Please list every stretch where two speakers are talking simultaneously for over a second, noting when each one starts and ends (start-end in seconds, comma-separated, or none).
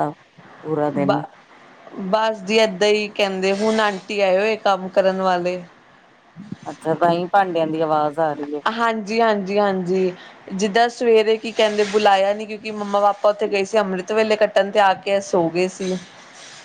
none